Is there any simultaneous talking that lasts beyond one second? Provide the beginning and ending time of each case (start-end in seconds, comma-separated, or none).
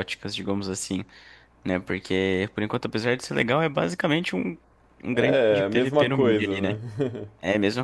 5.1-6.8